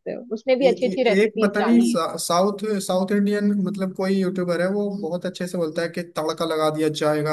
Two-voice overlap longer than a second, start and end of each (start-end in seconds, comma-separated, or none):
0.6-2.0